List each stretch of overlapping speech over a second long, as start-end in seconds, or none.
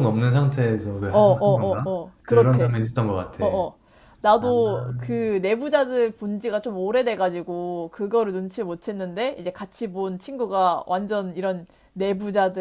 1.1-2.8